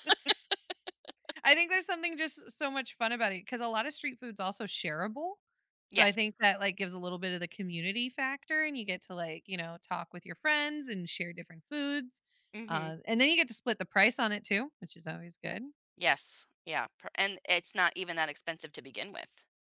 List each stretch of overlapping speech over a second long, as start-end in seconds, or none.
none